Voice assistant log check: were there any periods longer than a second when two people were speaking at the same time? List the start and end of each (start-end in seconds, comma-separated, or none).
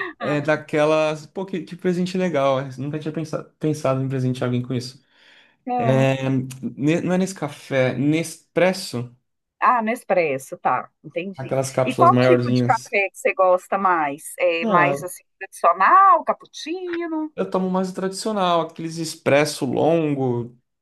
11.4-12.9